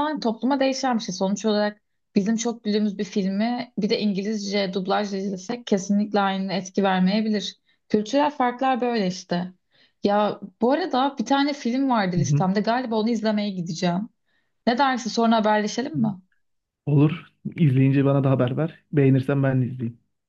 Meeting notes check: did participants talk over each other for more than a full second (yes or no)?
no